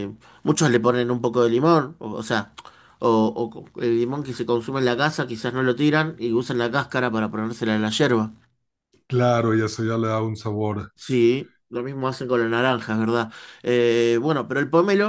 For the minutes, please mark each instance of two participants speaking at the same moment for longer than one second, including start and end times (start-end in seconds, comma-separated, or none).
none